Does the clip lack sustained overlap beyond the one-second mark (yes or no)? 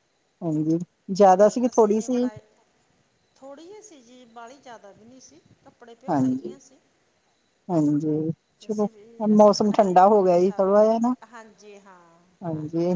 no